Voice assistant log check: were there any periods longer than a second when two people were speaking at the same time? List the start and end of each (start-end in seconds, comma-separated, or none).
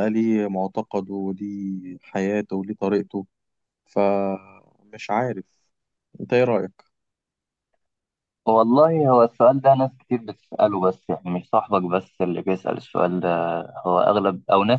none